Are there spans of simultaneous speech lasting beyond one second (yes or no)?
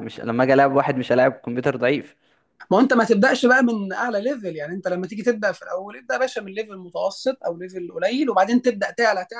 no